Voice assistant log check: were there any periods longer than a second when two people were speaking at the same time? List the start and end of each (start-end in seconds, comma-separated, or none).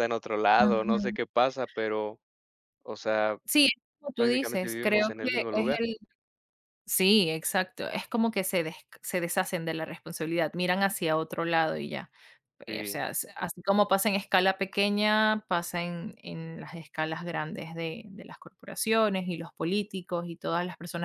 4.2-5.7